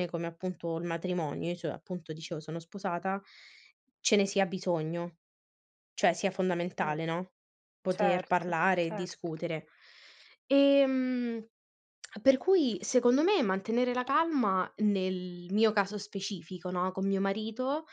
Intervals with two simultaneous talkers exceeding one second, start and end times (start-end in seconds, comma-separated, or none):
7.9-9.3